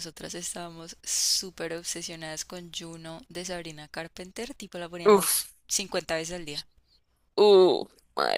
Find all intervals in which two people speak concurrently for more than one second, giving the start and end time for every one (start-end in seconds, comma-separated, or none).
none